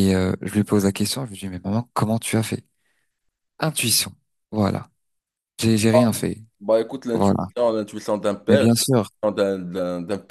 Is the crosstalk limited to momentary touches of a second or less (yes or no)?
yes